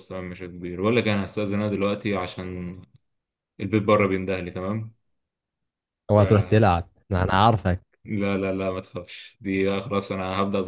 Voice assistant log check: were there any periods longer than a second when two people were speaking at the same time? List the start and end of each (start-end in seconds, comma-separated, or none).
none